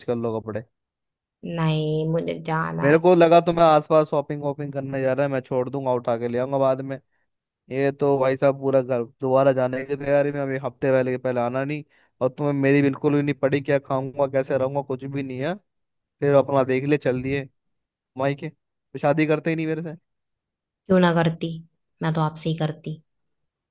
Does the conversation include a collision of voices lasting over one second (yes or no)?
no